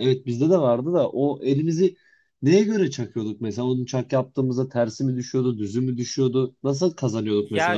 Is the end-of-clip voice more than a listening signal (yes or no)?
yes